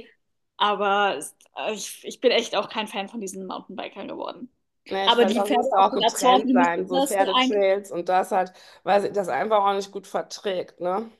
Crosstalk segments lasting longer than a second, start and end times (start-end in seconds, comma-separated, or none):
5.0-7.6